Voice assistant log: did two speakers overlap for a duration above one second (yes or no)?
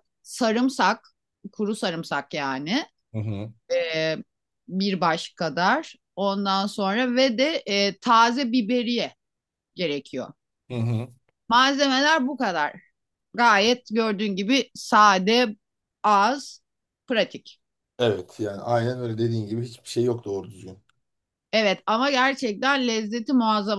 no